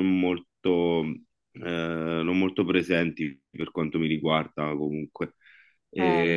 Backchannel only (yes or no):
yes